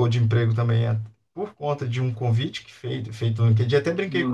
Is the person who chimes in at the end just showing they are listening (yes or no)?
yes